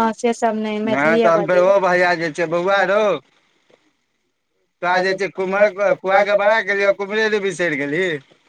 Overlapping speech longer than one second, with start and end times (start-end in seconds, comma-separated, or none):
none